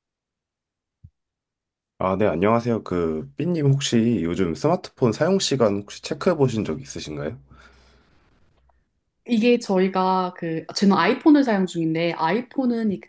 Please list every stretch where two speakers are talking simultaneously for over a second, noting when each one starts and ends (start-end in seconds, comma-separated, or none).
none